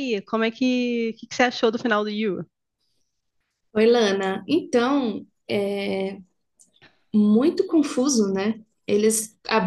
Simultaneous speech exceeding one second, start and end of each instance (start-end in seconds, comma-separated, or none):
none